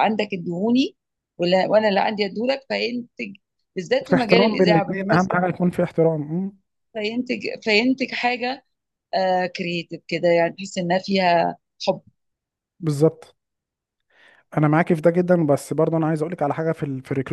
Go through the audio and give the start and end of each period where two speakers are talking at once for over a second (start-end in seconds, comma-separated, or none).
4.0-5.3